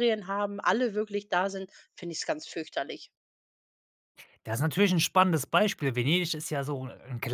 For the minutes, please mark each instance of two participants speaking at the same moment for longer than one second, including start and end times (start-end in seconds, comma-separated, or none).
none